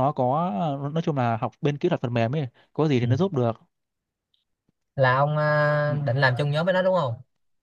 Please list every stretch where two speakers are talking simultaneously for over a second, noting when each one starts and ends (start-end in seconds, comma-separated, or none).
none